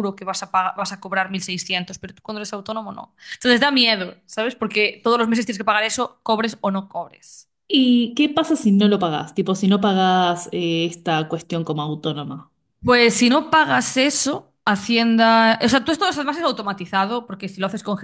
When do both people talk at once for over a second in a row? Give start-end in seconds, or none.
none